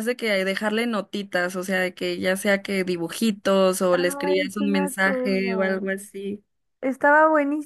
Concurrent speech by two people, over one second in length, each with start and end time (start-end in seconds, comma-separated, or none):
3.9-5.9